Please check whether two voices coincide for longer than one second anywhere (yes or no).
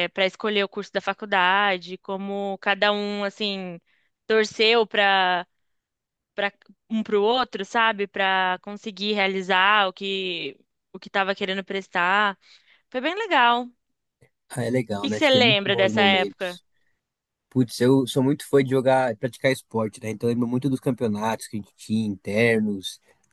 yes